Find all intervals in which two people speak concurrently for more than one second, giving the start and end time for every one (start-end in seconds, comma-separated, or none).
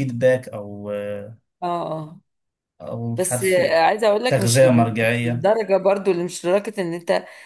4.3-5.5